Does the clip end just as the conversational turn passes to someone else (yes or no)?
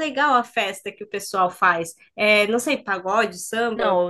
yes